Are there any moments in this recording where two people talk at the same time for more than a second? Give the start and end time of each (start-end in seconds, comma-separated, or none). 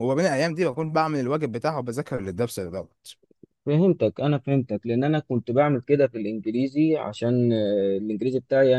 none